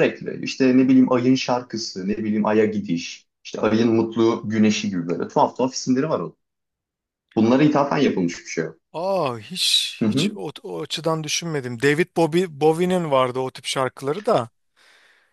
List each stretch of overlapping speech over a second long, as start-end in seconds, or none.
none